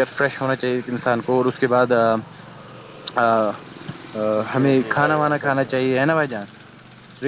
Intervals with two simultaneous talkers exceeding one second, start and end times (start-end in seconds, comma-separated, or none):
4.5-5.9